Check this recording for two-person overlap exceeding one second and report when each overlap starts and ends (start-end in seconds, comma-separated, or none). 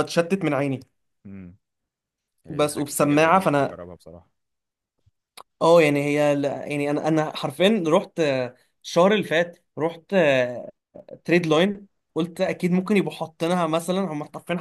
2.5-3.8